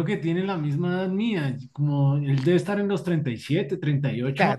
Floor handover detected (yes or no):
yes